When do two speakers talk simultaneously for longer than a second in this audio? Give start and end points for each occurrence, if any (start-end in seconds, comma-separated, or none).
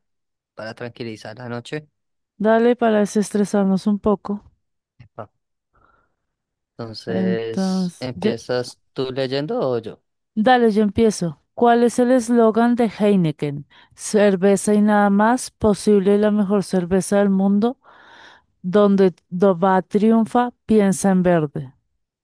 7.1-8.3